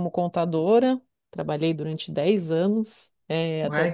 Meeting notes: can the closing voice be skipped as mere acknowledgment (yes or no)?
no